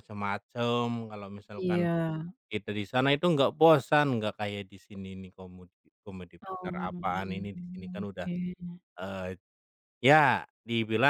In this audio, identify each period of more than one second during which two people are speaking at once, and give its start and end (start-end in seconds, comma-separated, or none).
6.5-8.3